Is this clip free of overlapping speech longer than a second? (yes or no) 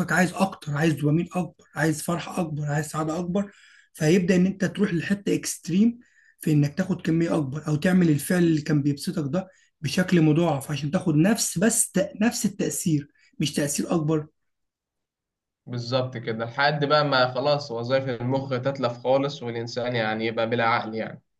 yes